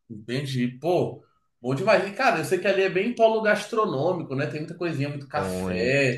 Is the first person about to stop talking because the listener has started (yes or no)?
no